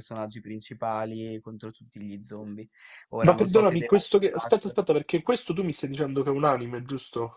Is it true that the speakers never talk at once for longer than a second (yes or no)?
no